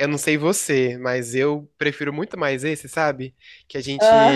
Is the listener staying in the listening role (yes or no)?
yes